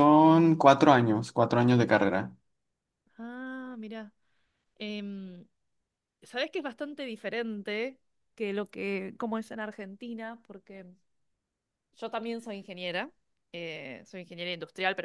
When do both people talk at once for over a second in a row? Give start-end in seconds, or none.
none